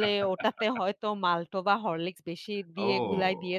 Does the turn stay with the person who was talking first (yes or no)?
no